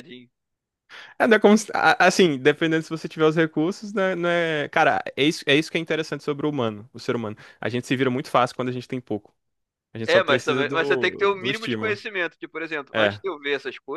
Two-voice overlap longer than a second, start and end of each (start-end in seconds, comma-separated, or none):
10.1-12.0